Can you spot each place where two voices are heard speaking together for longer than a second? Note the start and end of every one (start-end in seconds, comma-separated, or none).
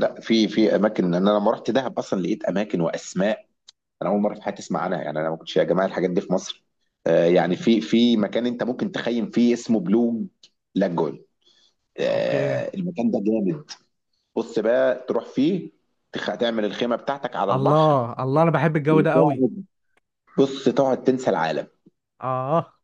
none